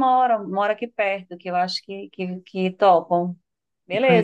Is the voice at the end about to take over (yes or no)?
yes